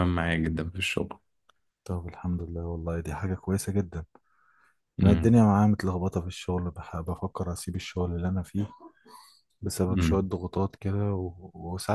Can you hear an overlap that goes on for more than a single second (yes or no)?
no